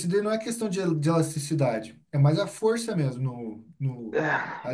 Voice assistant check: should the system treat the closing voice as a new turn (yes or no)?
yes